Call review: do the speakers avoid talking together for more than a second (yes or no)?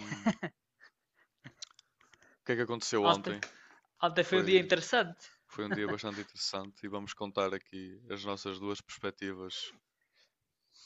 yes